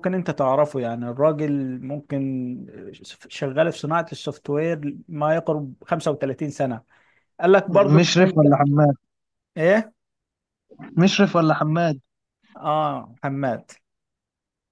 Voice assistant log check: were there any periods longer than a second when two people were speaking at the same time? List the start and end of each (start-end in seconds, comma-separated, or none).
none